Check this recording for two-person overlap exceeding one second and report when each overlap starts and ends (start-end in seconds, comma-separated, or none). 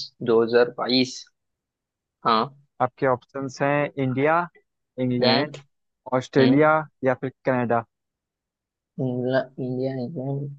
none